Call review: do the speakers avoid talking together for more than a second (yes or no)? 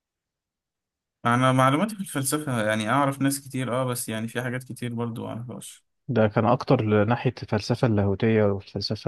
yes